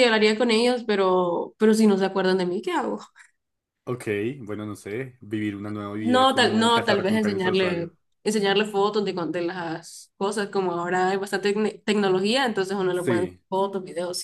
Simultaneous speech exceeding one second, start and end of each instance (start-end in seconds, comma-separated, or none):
6.0-7.9